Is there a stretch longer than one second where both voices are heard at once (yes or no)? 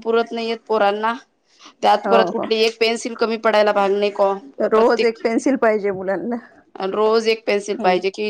no